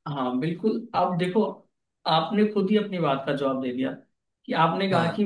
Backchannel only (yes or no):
yes